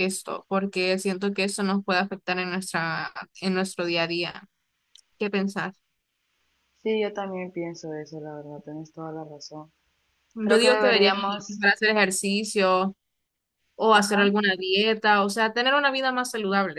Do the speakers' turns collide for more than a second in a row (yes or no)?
yes